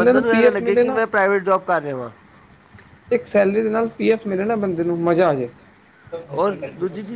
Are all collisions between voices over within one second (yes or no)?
yes